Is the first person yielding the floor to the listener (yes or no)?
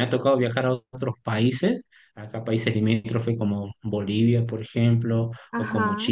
no